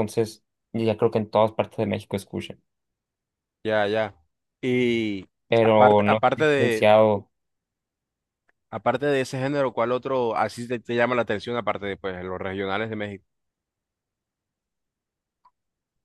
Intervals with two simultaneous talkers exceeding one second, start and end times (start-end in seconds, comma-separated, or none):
5.6-6.9